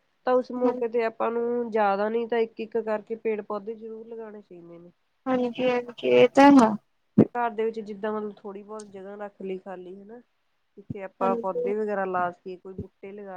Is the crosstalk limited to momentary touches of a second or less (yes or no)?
yes